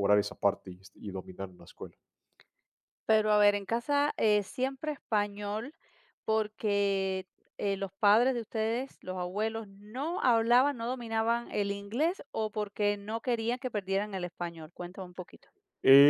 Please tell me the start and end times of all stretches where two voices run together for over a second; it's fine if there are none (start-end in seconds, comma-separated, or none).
none